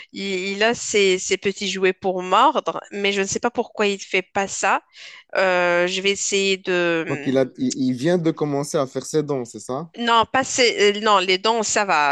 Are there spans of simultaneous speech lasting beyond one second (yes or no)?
no